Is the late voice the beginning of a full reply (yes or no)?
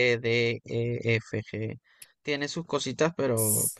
yes